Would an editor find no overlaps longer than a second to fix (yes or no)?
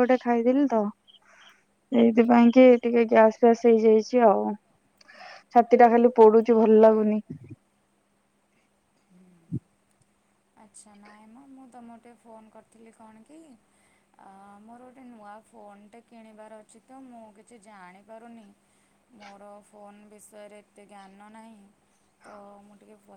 yes